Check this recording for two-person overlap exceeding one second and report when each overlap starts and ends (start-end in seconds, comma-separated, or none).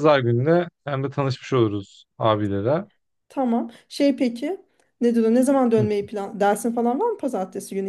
none